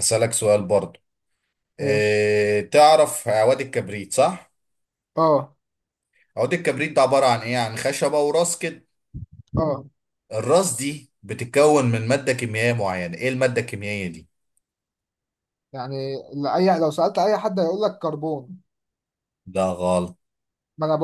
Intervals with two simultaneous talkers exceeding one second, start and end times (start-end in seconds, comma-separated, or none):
none